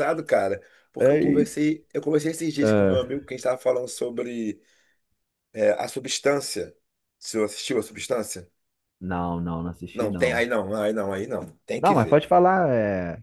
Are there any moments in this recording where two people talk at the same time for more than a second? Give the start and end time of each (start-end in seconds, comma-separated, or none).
none